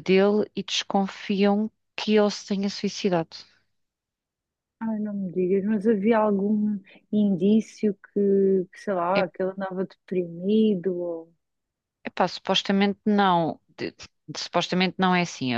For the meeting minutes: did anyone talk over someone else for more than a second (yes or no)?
no